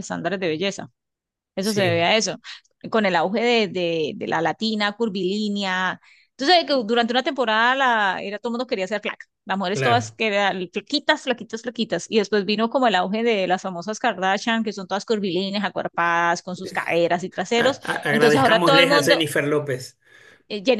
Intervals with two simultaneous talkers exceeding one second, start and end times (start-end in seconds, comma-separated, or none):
17.6-19.2